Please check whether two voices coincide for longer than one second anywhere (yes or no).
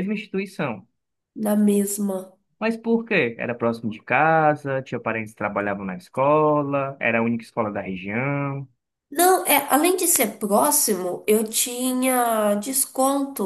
no